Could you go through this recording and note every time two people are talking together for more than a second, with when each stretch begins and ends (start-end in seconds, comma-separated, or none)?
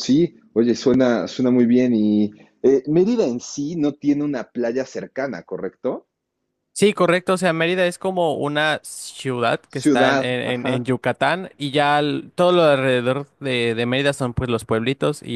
9.7-10.9